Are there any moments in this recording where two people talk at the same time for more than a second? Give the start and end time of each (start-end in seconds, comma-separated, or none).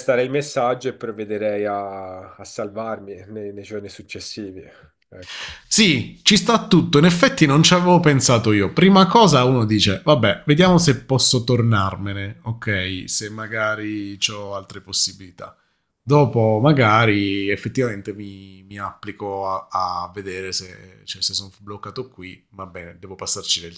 none